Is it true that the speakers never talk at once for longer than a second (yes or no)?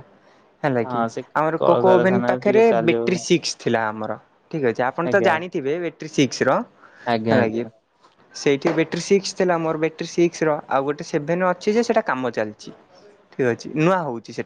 no